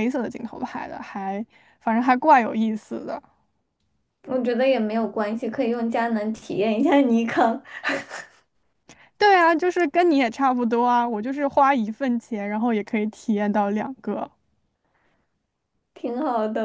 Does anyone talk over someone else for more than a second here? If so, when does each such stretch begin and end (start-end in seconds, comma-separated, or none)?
none